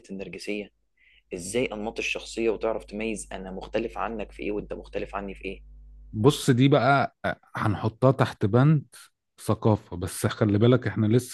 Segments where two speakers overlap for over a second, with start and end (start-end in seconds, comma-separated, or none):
none